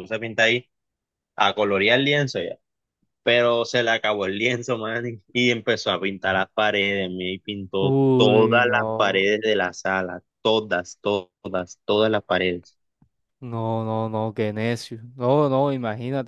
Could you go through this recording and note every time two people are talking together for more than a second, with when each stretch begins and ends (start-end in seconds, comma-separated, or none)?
7.8-9.2